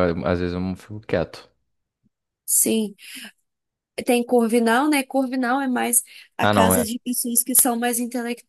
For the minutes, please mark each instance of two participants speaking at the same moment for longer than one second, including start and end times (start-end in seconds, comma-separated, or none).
none